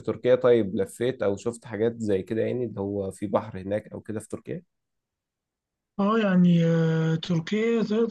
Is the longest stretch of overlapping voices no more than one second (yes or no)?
yes